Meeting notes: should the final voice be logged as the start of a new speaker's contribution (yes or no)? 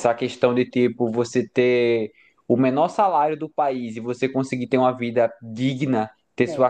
no